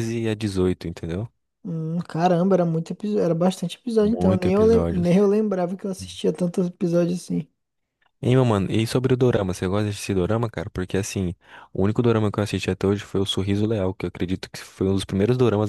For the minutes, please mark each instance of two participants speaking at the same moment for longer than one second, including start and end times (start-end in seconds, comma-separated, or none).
4.0-5.2